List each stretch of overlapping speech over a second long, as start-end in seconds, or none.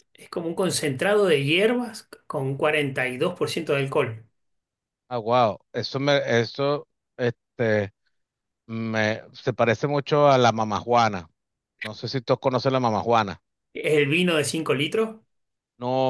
none